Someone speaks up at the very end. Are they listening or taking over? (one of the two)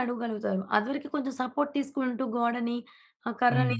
listening